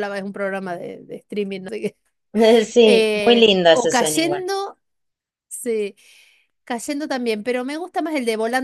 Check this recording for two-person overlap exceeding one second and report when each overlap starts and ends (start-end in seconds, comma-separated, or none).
2.8-4.5